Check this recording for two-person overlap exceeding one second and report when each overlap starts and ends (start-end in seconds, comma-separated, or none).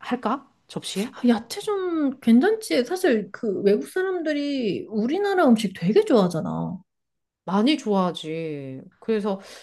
none